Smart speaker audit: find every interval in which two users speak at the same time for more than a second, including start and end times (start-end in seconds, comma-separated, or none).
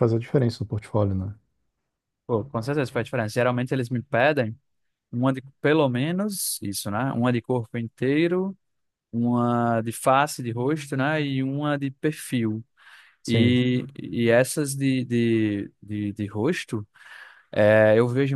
none